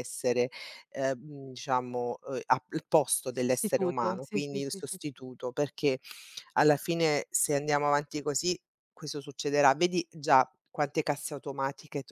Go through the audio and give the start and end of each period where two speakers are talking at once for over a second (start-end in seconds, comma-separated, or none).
3.3-5.1